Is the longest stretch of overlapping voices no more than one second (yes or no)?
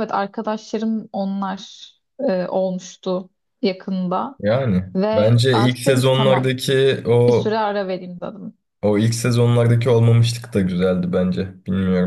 no